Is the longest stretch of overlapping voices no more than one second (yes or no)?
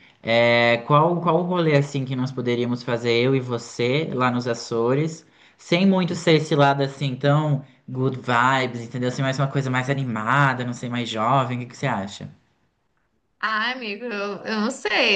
yes